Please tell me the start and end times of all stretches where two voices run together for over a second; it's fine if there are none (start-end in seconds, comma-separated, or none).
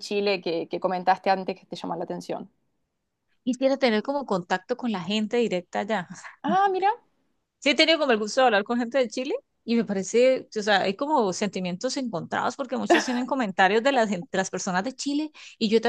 none